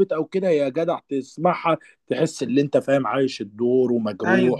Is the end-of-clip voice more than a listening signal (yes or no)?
no